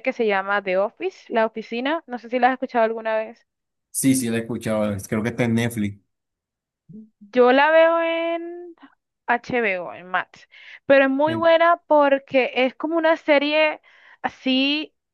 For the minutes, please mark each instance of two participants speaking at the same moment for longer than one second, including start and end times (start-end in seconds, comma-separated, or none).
none